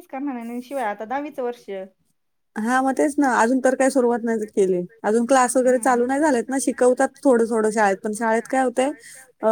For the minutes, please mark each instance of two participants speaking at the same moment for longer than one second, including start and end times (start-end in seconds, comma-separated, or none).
none